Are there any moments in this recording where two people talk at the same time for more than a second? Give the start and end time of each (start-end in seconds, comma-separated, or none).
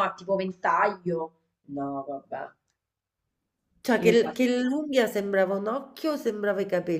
none